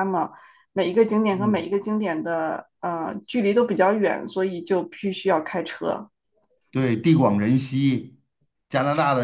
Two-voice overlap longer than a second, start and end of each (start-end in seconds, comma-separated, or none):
none